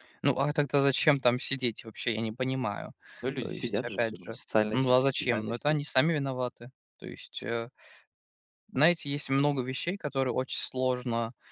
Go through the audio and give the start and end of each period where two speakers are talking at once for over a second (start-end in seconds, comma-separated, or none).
3.4-5.8